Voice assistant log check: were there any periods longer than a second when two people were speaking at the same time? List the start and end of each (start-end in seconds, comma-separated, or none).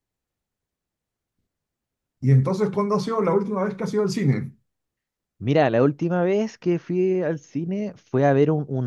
none